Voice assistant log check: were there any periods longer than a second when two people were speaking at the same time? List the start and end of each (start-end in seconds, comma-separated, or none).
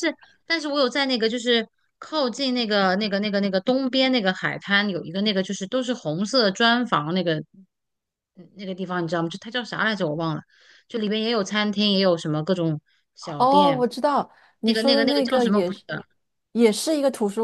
14.6-15.8